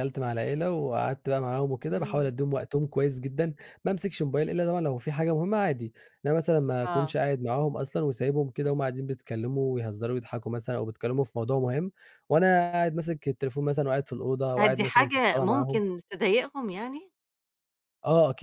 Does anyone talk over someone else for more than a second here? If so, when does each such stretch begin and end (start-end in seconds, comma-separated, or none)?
14.6-15.8